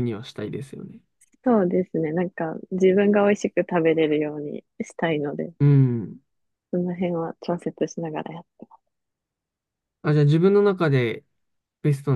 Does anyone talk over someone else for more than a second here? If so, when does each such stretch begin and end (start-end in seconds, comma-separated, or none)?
none